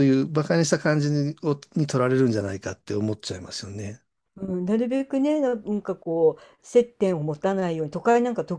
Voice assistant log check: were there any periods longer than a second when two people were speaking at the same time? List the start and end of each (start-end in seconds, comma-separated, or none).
none